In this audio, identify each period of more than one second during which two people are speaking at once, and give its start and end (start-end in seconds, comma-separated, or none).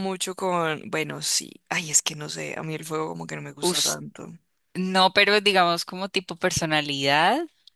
none